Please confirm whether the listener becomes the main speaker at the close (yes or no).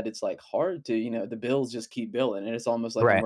no